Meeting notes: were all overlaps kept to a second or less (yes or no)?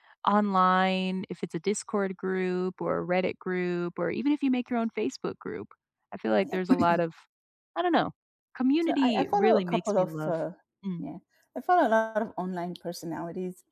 no